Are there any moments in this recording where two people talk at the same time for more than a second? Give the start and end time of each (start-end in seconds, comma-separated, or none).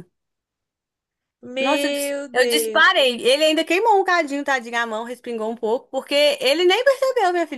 1.6-3.0